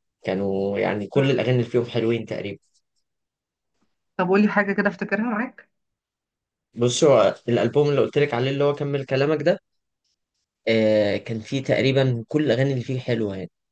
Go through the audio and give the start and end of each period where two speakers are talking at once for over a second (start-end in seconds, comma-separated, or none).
none